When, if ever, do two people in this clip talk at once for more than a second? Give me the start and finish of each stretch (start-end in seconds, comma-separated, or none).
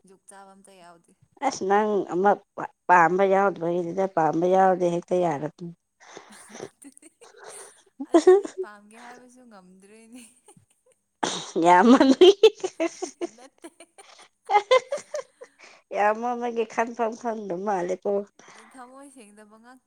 none